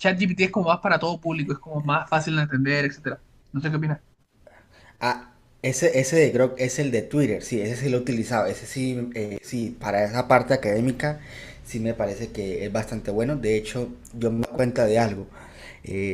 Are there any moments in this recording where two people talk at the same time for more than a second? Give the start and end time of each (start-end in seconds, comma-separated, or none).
none